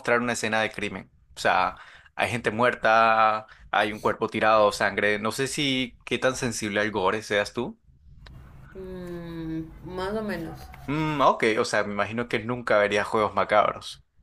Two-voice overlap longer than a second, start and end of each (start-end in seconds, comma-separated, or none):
none